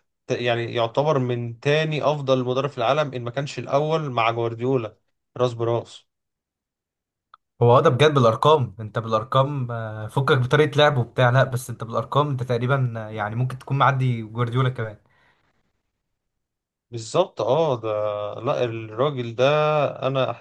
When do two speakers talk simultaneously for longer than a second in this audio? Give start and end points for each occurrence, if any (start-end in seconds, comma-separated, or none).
none